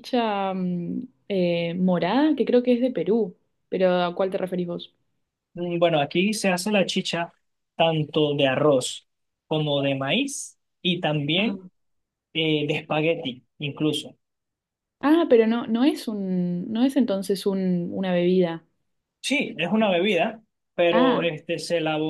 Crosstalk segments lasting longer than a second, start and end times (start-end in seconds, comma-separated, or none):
none